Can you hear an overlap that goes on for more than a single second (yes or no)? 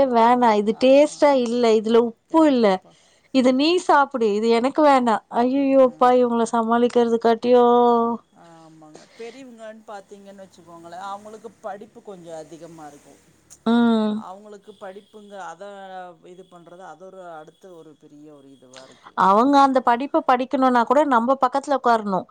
no